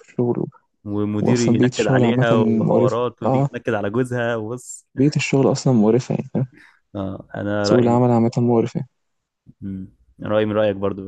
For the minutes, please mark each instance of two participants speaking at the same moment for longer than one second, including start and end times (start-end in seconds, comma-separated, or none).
1.2-3.5